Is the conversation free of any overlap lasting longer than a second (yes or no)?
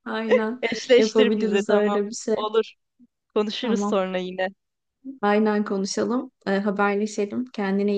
no